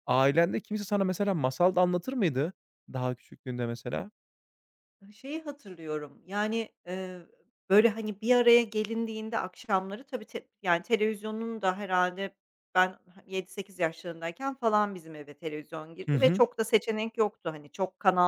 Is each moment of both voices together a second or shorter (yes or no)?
yes